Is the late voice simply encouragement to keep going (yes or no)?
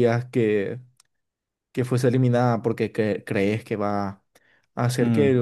yes